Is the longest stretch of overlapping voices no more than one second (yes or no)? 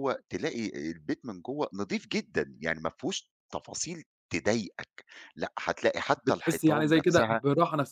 no